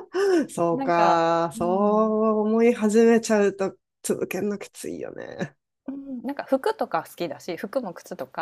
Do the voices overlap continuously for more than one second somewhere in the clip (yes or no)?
yes